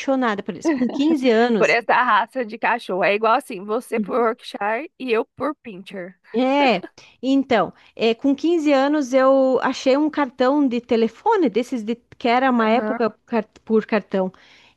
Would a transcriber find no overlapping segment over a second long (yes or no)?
yes